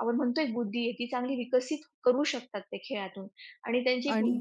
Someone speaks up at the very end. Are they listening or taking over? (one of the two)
listening